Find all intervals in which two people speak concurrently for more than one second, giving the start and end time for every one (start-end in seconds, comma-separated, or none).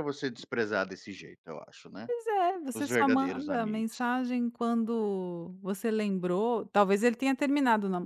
2.7-4.0